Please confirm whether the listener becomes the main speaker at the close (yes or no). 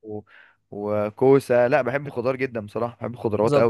yes